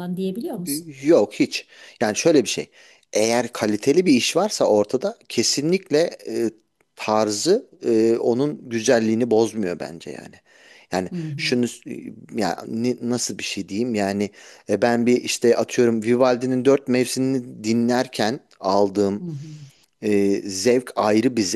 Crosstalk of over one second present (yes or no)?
no